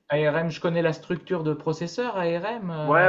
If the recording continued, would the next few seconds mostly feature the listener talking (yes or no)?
yes